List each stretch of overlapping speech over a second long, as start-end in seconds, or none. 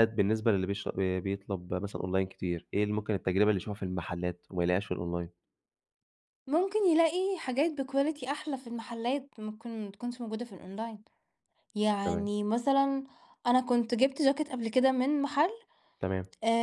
none